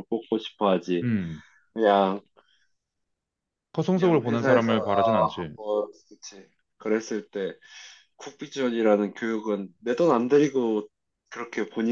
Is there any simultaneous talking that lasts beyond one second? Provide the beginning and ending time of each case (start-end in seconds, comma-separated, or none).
3.9-5.5